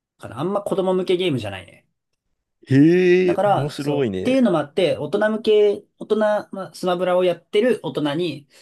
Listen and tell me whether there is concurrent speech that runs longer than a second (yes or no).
yes